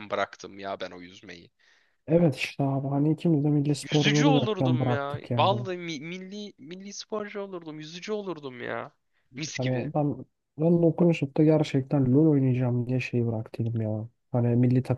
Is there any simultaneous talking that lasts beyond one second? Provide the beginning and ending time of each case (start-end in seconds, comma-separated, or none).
3.9-5.7